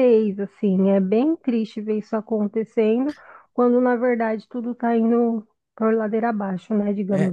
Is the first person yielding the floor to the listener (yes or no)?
yes